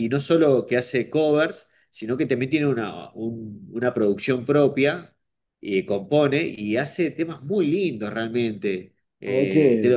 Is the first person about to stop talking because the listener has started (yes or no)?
no